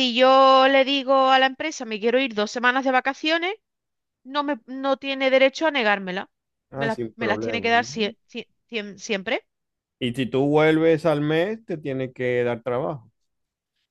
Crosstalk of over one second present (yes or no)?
yes